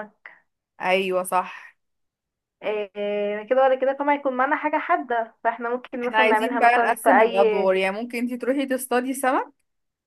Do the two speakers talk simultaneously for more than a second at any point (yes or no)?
yes